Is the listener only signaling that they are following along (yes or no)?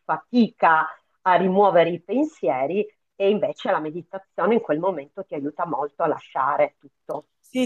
no